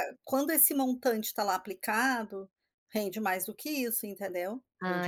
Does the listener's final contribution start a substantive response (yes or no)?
no